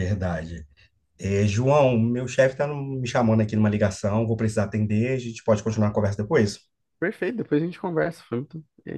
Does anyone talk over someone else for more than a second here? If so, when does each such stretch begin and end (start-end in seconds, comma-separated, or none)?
none